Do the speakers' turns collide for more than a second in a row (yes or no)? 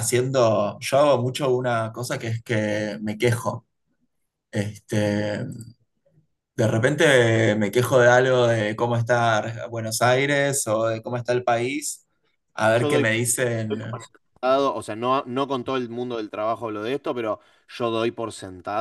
no